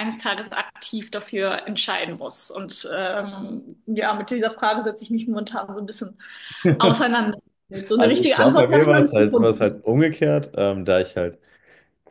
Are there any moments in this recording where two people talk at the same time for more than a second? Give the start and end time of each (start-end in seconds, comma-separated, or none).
8.0-9.7